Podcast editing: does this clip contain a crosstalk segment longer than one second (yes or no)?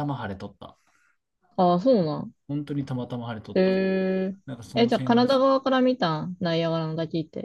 no